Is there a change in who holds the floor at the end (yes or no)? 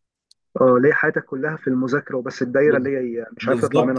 yes